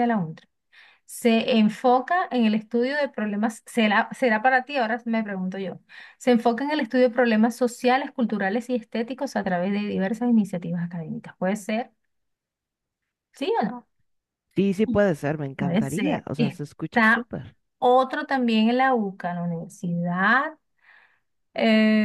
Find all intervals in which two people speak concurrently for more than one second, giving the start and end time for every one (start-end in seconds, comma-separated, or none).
15.6-17.2